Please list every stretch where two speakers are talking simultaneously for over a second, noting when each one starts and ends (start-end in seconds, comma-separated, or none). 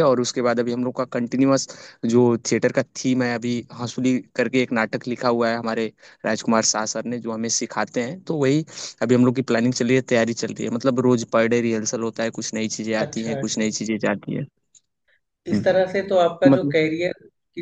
none